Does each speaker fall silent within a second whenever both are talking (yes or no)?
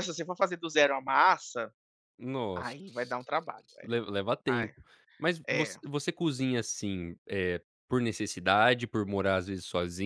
yes